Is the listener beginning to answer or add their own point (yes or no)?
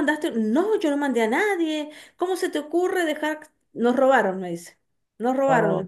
no